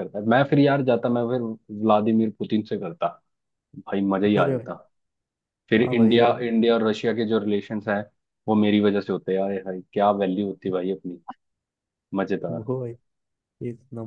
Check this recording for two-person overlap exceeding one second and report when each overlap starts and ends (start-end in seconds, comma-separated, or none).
none